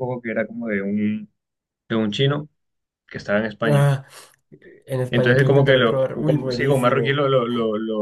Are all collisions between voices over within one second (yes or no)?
no